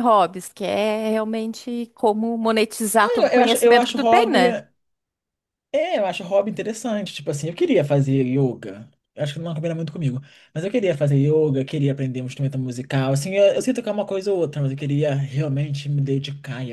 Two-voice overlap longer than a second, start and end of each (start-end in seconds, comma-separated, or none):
3.0-4.5